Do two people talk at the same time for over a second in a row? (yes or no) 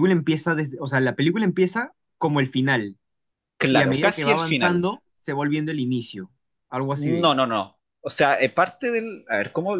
yes